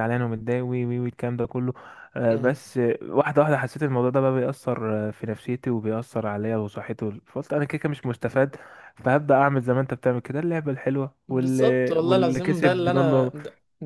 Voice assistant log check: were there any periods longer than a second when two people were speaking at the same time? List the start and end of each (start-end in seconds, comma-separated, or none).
11.3-13.3